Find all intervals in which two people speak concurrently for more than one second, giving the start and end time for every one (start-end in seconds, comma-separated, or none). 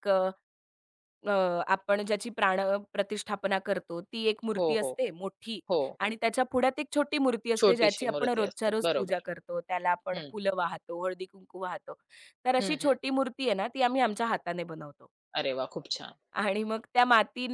7.6-9.2